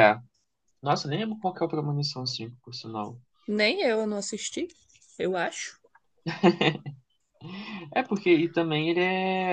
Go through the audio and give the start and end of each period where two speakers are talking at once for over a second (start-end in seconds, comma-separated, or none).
none